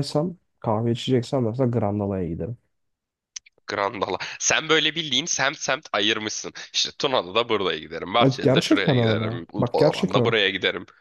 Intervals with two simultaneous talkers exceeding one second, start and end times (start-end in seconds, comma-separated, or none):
8.2-10.3